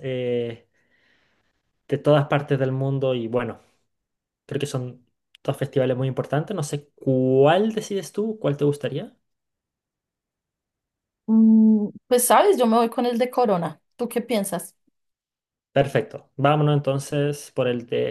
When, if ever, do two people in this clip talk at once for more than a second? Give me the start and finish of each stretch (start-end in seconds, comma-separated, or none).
none